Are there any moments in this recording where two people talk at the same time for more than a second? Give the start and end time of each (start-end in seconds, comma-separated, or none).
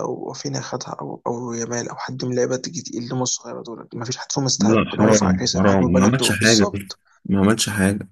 4.6-6.7